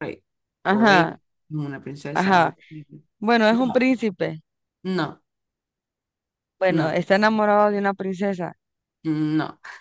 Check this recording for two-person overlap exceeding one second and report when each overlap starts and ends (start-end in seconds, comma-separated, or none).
none